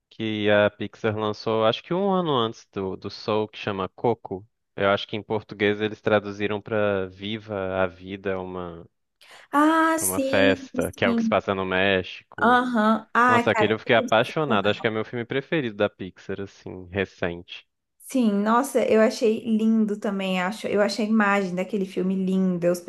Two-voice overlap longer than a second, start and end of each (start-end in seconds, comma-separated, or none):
10.0-11.4, 13.3-14.9